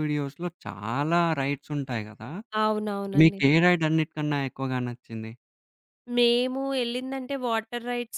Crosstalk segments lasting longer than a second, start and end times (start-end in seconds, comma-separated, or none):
none